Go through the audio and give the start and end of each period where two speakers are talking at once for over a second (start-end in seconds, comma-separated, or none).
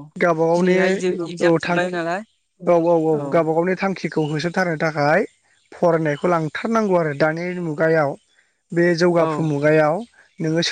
0.6-2.0